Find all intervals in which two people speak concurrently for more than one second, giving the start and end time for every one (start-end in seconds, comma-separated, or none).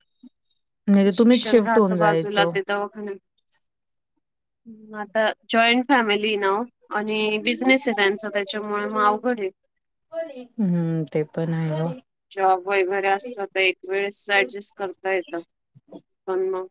1.2-2.5